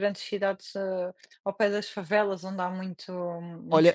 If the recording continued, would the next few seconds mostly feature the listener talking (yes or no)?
yes